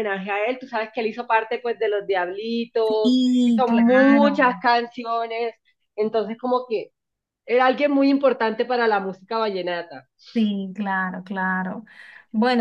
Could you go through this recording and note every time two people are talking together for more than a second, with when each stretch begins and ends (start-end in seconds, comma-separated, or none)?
3.0-4.4